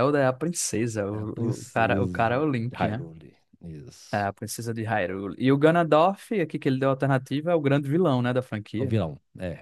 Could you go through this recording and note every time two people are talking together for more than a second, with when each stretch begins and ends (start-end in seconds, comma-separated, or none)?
1.1-3.0